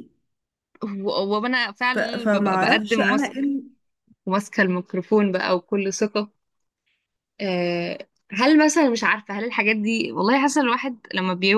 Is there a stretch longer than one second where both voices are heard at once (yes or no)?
yes